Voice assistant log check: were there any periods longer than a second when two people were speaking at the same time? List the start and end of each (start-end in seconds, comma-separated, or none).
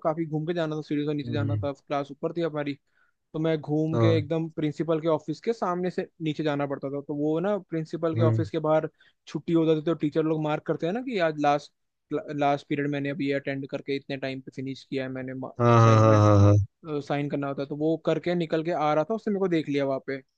none